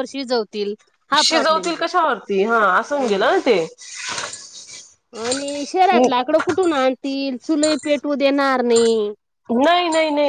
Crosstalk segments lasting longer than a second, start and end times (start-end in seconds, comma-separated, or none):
none